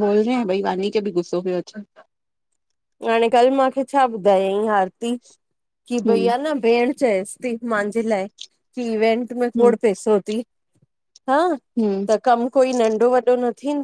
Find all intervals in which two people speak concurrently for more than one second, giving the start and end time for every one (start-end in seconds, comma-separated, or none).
none